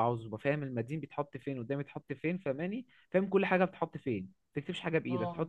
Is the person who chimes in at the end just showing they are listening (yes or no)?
yes